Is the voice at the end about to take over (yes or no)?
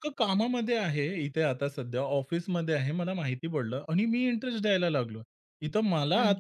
no